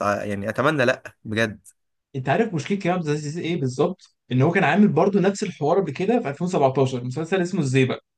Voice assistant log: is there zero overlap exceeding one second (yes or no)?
yes